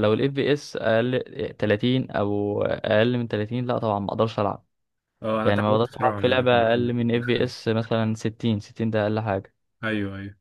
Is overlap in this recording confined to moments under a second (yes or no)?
no